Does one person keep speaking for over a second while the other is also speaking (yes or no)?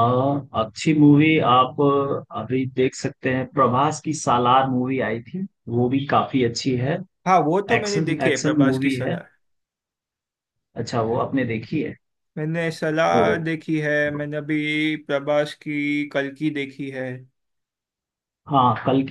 yes